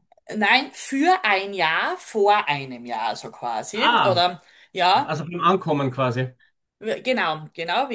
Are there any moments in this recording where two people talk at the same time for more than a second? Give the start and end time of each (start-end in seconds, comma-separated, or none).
none